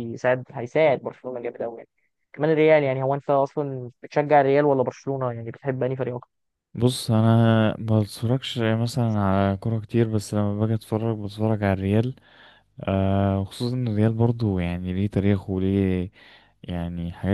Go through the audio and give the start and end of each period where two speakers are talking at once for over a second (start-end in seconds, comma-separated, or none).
none